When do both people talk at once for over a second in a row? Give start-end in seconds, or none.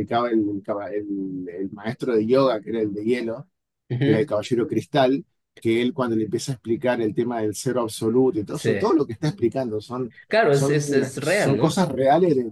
10.5-11.8